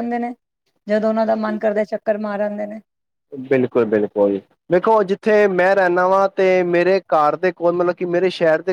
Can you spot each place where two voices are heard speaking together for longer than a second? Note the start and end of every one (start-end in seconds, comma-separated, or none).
none